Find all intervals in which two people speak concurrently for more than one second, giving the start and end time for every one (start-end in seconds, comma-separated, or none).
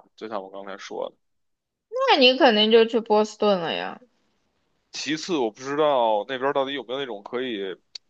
none